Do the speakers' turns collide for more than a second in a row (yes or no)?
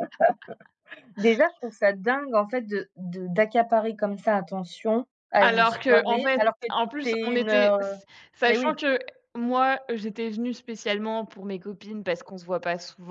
yes